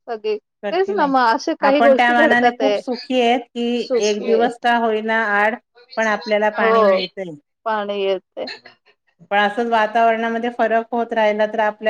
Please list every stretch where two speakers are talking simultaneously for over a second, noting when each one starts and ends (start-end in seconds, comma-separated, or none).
0.7-2.8